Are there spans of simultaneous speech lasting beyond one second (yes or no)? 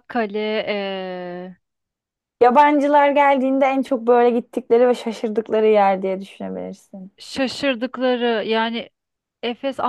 no